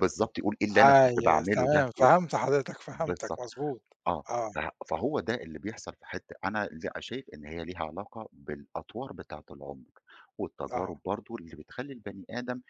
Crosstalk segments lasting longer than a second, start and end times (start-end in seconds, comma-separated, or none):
0.8-2.1